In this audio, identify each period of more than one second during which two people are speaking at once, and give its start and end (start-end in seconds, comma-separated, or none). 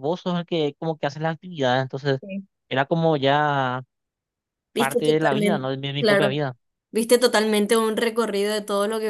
4.8-6.4